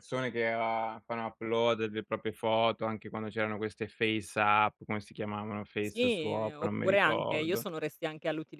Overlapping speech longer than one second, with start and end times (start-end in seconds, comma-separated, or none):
5.8-7.7